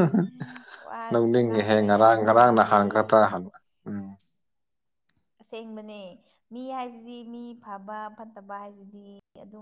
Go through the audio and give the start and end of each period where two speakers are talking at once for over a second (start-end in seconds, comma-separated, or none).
1.1-2.8